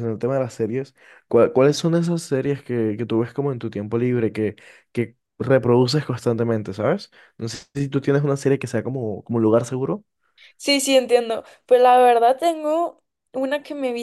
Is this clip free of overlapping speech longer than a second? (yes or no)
yes